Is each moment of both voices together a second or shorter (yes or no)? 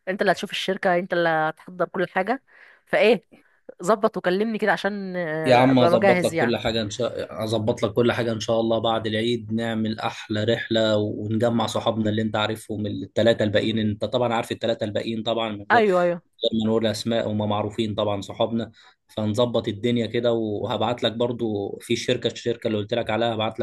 no